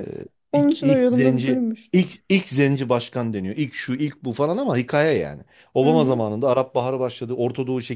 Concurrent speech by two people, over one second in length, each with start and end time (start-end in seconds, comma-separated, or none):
0.5-2.0